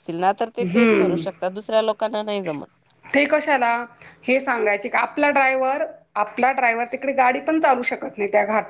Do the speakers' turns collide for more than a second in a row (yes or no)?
no